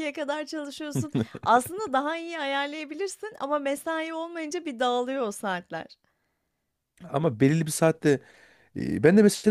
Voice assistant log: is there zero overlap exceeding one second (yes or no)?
yes